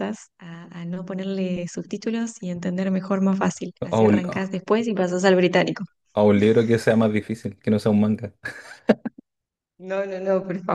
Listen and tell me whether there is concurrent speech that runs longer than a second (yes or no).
no